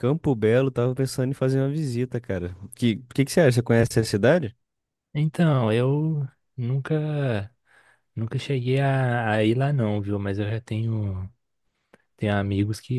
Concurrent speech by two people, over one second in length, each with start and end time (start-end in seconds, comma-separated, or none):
none